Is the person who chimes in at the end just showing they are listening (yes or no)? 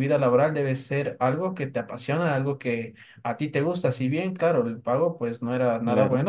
yes